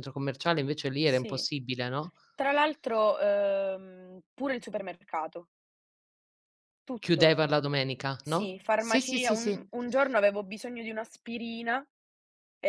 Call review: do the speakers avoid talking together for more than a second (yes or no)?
no